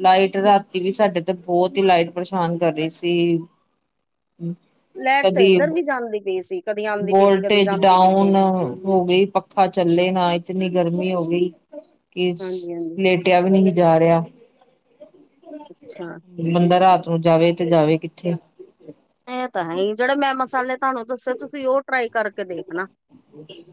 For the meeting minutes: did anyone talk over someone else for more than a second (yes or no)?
yes